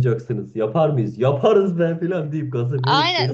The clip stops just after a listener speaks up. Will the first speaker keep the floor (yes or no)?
no